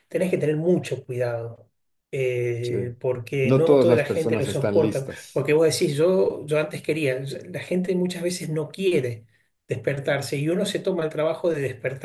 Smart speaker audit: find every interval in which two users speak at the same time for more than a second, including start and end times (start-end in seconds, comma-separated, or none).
3.4-5.5